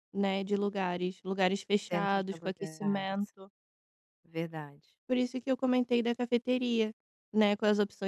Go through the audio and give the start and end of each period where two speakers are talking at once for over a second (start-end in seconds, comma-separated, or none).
1.9-3.3